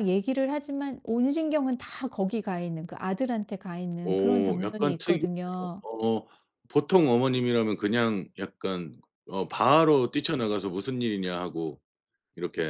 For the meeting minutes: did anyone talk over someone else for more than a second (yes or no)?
yes